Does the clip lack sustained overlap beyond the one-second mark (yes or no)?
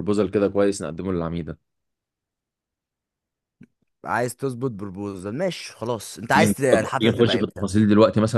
no